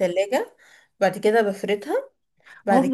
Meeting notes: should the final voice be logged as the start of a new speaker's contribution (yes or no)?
yes